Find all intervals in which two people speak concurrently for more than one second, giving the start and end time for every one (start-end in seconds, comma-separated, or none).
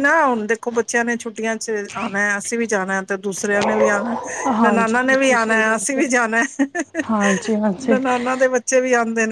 4.6-6.1